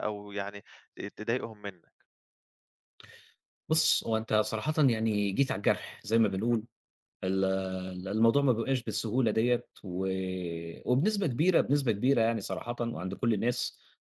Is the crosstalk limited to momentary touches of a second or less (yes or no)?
yes